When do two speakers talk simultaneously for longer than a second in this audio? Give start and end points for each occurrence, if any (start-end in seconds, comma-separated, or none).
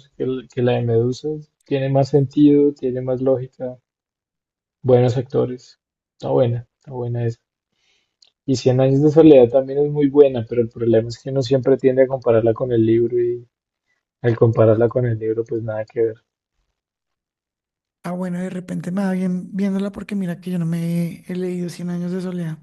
none